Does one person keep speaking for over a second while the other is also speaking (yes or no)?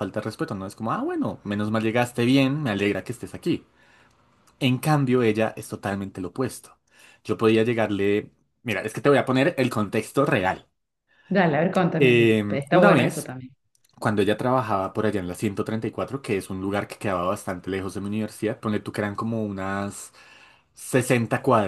yes